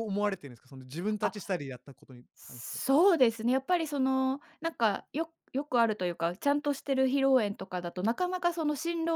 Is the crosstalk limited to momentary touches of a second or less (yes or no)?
yes